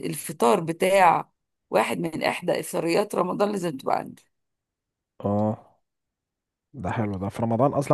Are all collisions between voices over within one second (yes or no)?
yes